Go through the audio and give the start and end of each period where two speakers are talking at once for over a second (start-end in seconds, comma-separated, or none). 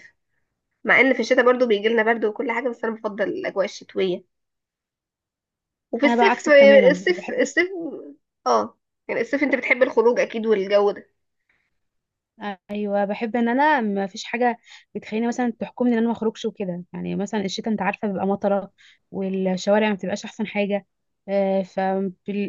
6.0-7.6